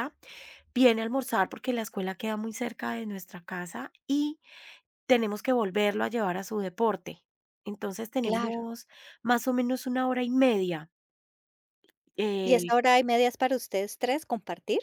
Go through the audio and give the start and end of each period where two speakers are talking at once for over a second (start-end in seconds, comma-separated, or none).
none